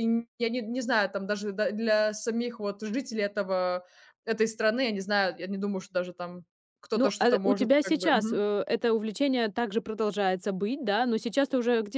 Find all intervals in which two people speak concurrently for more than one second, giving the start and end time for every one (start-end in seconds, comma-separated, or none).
6.9-8.4